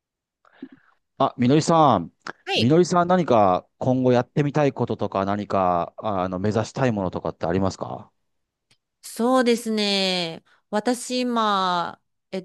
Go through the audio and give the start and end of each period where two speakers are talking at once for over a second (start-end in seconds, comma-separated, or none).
none